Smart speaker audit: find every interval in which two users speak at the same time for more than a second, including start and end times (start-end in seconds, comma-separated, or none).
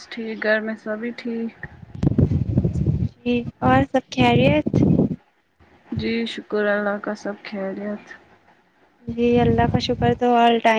none